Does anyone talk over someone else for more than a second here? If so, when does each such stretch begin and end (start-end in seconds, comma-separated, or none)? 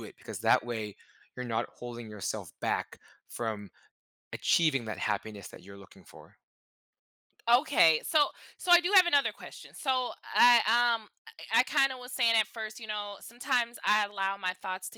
none